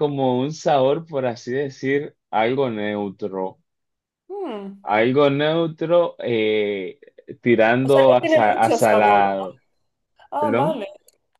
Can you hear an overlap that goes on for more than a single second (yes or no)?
yes